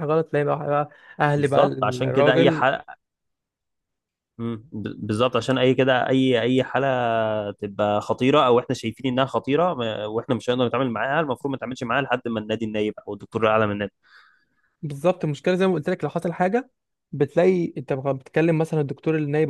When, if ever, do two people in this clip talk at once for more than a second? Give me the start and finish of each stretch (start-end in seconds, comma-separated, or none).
1.4-2.6